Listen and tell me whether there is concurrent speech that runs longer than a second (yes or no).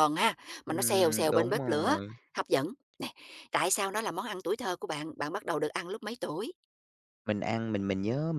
yes